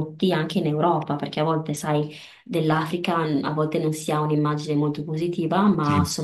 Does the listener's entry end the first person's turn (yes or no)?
no